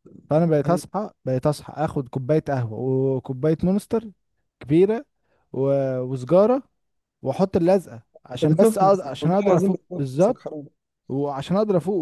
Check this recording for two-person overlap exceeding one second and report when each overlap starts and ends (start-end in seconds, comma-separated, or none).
8.4-10.4